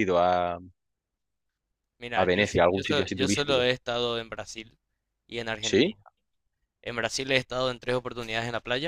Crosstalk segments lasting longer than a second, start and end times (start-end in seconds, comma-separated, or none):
2.1-3.7